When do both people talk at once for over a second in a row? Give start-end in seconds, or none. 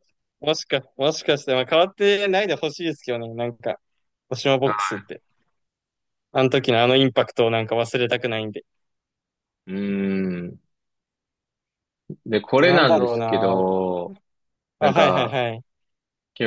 12.4-13.6